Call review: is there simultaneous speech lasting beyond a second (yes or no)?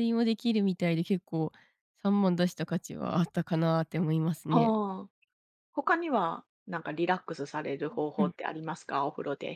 no